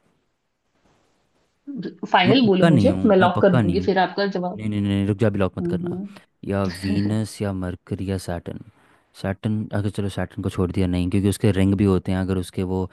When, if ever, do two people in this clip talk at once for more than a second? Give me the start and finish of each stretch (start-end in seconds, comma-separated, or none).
2.3-3.9